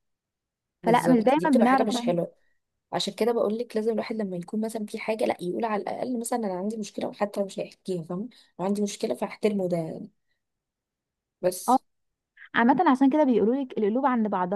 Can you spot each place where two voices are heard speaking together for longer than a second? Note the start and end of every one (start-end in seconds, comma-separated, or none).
0.8-2.2